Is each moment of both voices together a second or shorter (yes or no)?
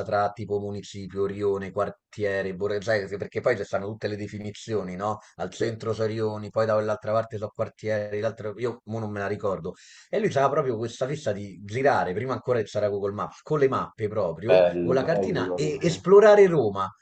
no